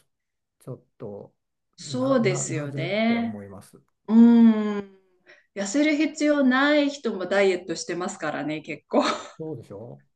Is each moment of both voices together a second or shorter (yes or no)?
no